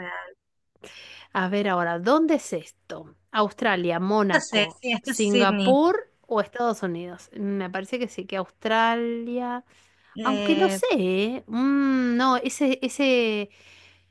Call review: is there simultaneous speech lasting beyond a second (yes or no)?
yes